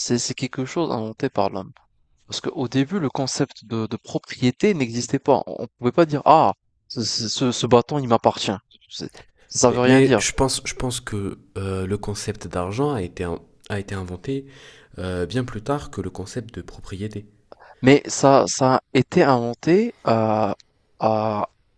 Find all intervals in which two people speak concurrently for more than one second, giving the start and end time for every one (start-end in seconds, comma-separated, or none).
none